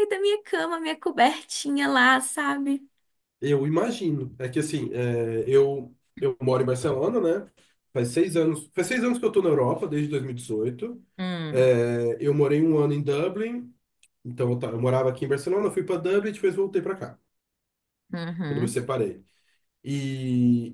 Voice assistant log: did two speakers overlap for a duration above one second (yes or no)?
no